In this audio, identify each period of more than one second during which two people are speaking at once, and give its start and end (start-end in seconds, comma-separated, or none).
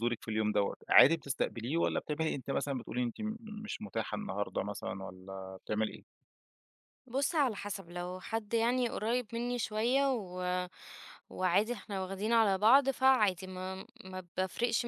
none